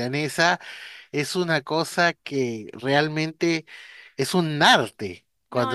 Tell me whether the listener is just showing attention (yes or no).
no